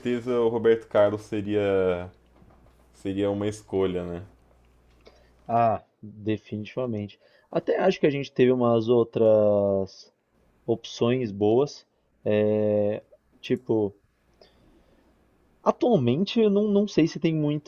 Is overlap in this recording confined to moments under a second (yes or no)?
yes